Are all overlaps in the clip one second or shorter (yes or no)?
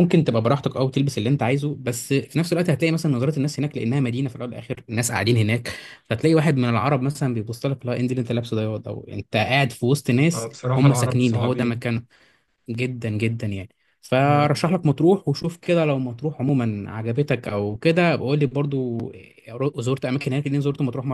no